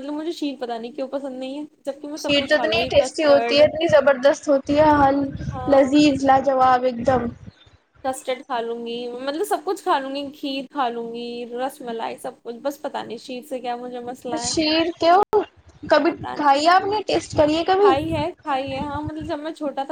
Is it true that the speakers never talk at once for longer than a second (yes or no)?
no